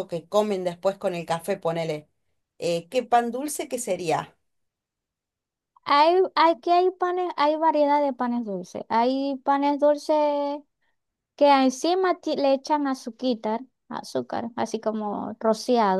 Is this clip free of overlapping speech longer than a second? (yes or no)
yes